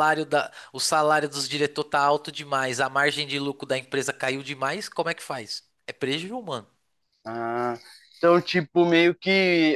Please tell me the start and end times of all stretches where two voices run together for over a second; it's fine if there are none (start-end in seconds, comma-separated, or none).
none